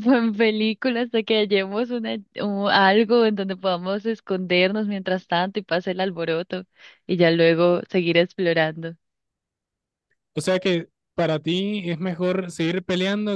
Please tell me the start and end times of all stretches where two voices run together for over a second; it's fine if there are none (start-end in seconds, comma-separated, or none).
none